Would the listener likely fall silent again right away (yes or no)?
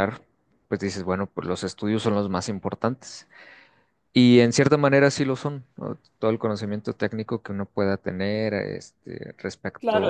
no